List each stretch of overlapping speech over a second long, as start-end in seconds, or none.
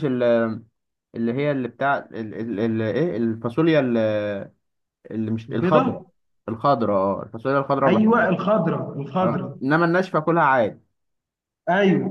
none